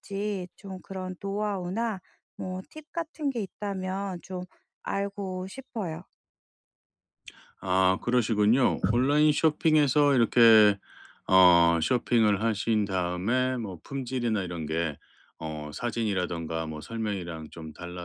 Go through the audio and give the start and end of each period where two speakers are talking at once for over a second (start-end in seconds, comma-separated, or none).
none